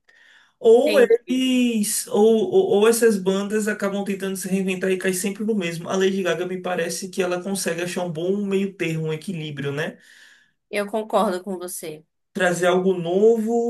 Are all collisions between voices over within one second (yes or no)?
yes